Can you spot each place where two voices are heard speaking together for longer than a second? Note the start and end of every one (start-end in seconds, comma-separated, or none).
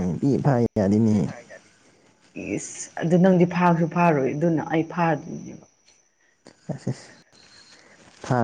none